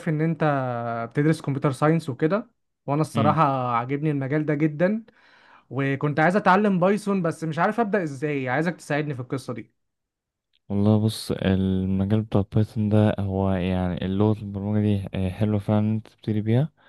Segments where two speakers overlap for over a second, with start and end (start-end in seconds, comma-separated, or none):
none